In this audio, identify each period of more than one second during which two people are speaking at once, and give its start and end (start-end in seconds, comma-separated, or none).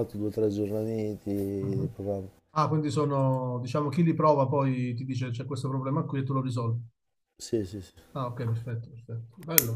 none